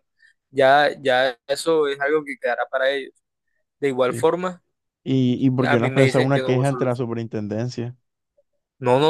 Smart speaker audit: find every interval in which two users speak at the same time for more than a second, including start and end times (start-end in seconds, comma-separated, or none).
5.7-7.0